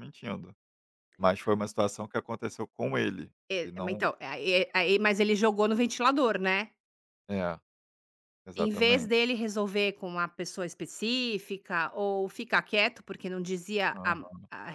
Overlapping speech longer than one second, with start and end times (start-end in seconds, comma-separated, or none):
none